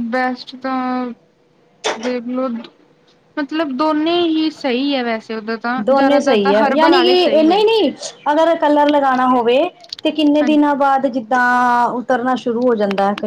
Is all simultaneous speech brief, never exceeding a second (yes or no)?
no